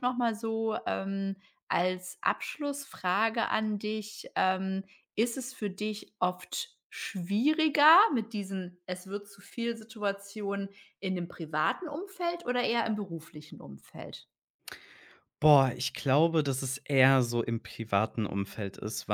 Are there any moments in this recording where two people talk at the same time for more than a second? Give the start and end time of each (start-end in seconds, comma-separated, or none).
none